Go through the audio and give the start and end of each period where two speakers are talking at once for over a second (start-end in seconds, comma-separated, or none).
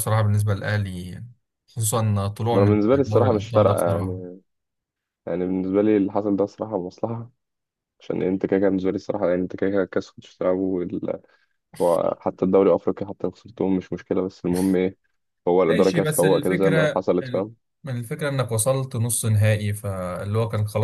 2.5-4.2, 15.7-17.5